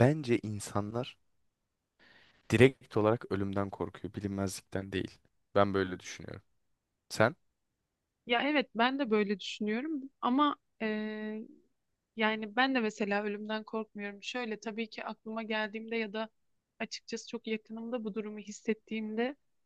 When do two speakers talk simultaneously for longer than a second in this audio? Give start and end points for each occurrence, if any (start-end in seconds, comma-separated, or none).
none